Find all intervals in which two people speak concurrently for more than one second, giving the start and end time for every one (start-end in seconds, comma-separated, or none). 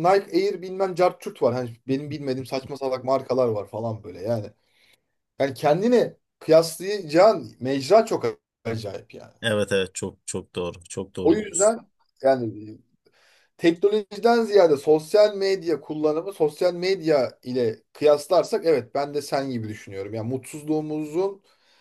none